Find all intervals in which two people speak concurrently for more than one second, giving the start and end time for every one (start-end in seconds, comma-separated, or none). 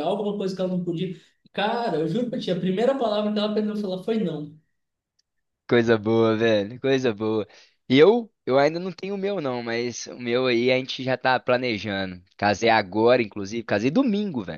none